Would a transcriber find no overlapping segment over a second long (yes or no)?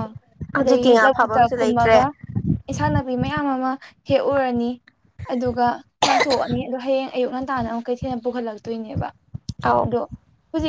no